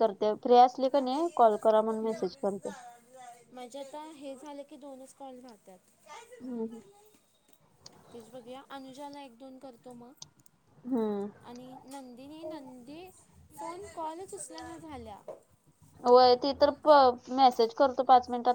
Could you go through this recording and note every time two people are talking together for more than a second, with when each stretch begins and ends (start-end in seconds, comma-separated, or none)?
none